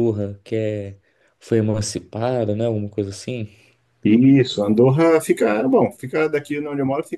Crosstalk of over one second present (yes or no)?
no